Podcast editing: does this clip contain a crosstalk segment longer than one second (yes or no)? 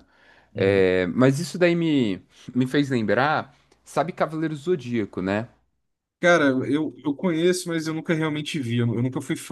no